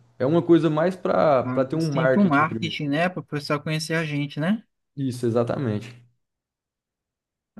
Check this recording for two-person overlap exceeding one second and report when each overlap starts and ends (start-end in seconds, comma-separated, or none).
1.4-2.8